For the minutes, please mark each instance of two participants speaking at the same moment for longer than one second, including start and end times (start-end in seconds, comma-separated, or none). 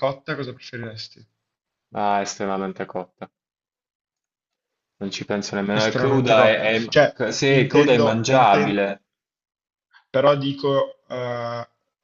5.7-8.8